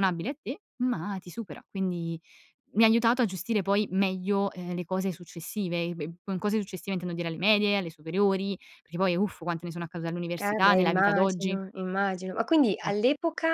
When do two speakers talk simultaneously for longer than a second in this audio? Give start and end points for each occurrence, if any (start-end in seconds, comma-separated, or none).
10.4-11.6